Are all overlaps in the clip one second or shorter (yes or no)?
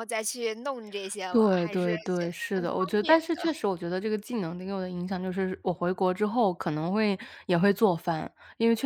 no